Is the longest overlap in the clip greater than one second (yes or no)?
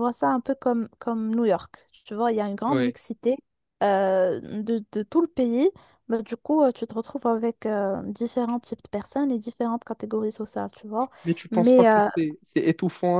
no